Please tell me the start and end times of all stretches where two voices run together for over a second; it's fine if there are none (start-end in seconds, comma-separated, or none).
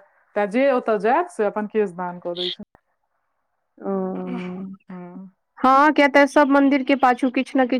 none